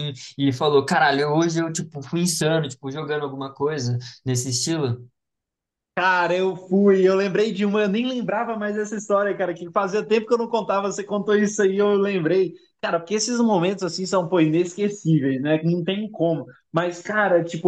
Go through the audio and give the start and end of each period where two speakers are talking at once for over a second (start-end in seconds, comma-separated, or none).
none